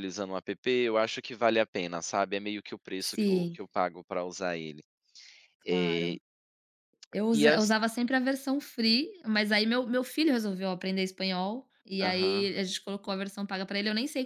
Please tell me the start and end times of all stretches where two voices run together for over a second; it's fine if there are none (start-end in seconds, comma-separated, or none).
none